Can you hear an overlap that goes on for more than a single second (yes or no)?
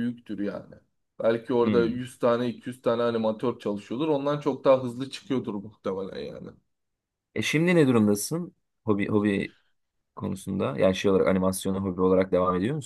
no